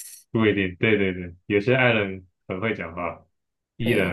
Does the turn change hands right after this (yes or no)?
yes